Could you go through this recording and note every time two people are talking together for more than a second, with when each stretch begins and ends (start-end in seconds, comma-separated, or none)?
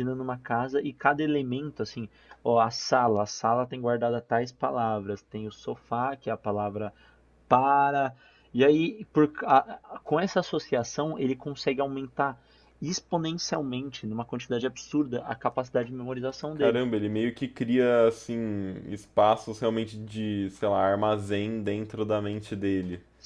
none